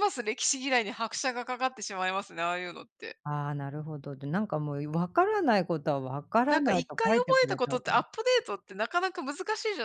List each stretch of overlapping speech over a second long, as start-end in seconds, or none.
6.5-7.9